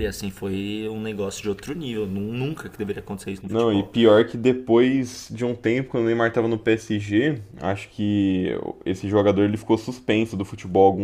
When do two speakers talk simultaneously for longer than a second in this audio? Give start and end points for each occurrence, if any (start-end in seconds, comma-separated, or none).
none